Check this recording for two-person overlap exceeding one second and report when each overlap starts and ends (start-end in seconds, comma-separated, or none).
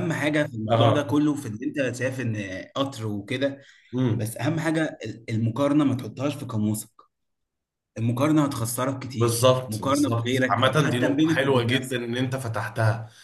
9.1-12.1